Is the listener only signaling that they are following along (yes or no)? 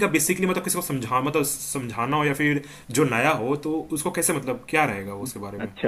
no